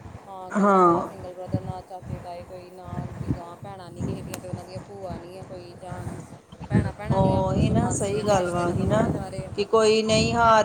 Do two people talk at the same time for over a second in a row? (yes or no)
yes